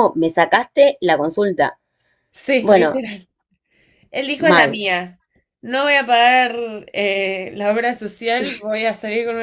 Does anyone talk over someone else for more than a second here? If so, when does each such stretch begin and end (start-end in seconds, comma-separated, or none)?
none